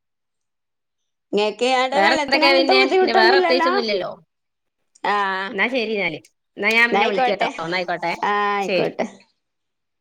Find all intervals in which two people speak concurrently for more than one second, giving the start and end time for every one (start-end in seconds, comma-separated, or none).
1.9-3.8